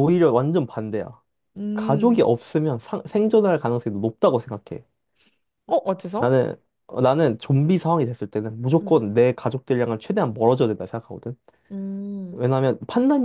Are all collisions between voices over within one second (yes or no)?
yes